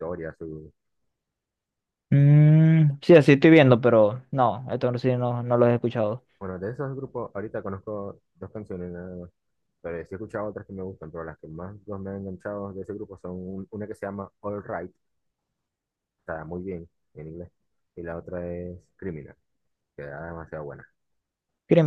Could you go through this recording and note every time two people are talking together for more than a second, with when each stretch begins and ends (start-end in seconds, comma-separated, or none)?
none